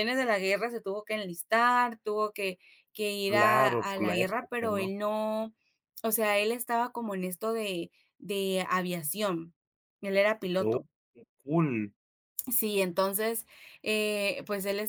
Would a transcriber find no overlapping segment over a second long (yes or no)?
no